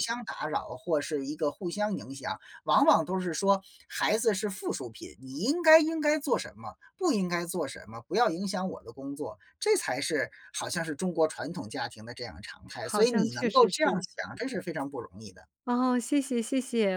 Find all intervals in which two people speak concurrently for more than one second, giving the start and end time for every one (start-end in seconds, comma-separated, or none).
12.7-14.0